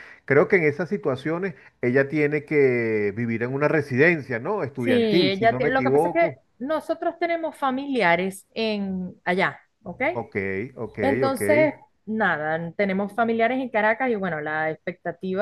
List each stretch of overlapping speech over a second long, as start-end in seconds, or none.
4.8-6.4